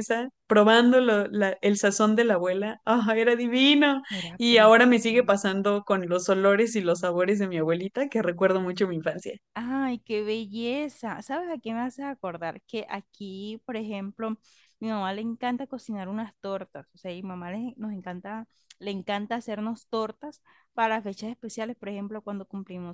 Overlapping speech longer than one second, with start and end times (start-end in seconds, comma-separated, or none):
4.1-5.5